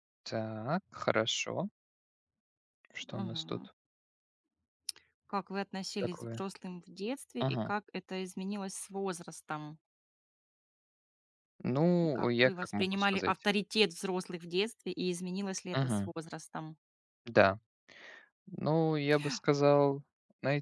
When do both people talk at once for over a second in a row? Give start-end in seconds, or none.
12.0-13.5